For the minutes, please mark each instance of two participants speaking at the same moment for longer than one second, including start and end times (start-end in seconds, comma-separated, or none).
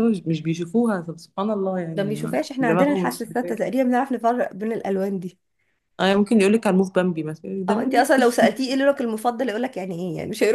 1.9-3.5